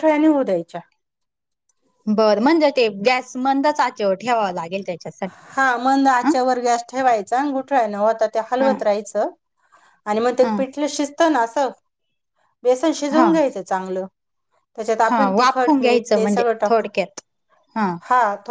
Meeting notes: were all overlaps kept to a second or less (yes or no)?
no